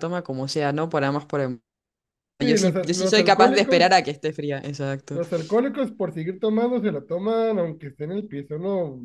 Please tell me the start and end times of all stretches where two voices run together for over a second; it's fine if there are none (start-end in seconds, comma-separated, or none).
2.4-3.9